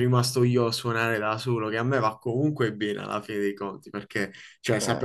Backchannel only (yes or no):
yes